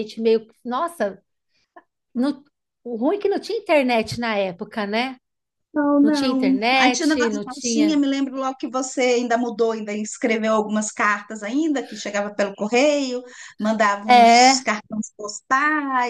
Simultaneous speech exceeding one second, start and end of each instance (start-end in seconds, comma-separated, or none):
6.0-8.0